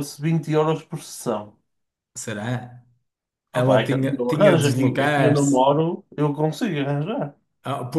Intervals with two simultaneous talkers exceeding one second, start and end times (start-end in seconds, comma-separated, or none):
3.5-5.6